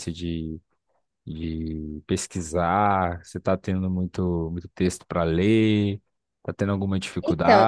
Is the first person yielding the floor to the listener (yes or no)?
yes